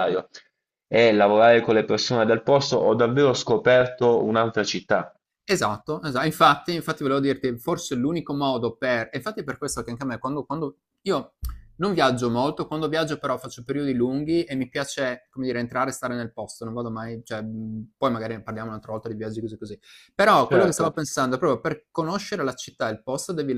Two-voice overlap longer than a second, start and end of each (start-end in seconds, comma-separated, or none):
none